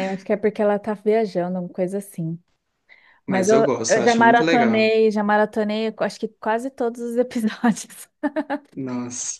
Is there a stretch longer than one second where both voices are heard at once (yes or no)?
yes